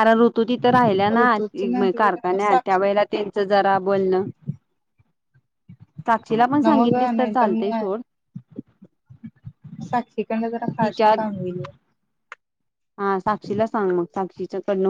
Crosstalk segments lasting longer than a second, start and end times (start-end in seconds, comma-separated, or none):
1.2-2.8